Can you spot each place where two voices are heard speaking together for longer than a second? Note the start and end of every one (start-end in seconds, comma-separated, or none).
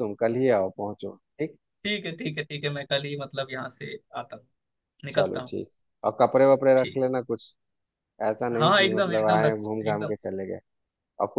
8.5-10.1